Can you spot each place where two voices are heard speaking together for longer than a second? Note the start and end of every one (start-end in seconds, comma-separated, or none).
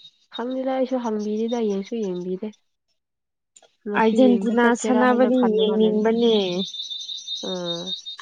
4.0-6.1